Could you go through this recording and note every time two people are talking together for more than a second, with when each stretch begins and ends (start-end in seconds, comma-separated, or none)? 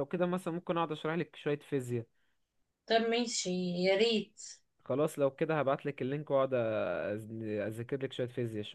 none